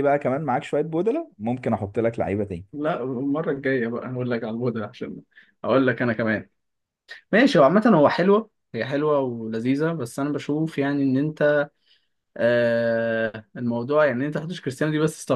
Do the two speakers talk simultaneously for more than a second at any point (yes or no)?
no